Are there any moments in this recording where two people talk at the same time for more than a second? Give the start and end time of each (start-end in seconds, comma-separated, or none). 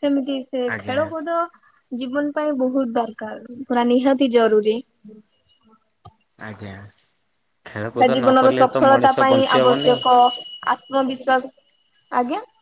8.0-10.0